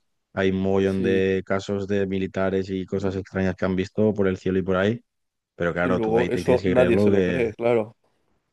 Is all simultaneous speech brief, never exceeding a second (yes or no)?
no